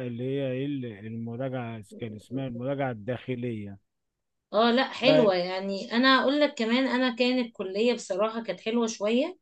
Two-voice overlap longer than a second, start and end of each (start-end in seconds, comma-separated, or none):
none